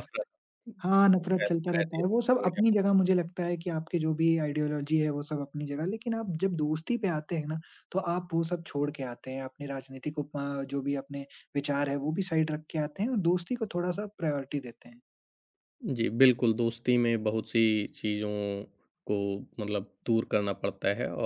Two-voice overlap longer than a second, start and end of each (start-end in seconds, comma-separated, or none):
1.3-2.6